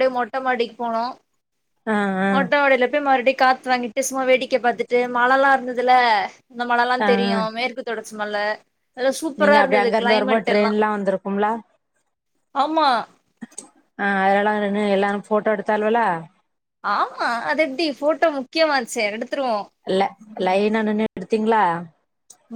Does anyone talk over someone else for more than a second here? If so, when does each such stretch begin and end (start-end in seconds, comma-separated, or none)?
9.4-10.7